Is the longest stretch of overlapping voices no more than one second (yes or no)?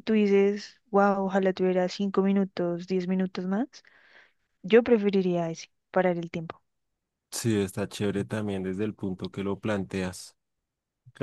yes